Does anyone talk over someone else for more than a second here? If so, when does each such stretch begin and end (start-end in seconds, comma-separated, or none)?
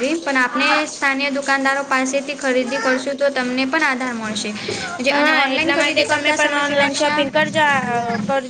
5.1-7.2